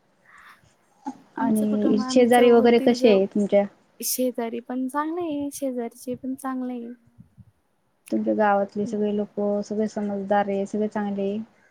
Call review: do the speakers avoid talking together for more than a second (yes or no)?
no